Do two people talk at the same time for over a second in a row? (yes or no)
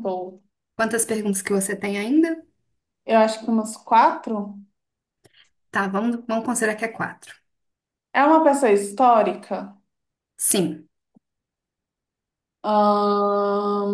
no